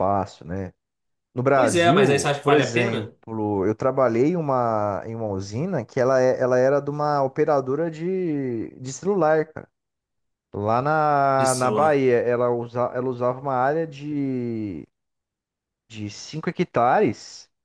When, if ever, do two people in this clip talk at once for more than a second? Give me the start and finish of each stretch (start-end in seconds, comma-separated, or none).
1.5-3.1